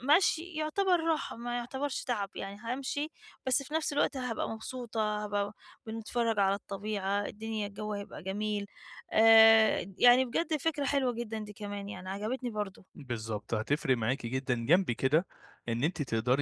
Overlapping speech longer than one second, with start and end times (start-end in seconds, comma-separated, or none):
none